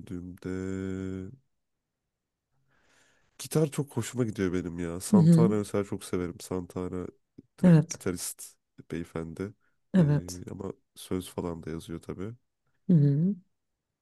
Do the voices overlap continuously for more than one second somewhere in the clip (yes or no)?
no